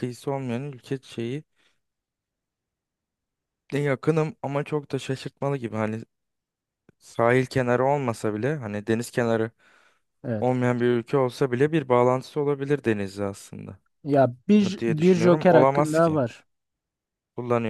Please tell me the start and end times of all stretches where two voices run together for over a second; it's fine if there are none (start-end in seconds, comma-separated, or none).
14.6-16.2